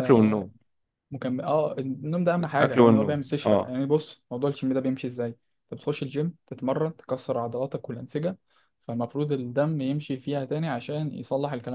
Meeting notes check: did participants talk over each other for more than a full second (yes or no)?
yes